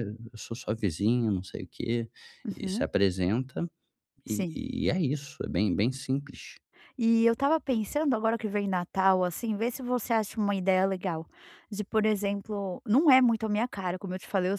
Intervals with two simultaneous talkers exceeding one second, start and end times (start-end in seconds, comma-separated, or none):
none